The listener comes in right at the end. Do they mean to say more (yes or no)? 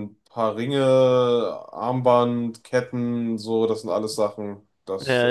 yes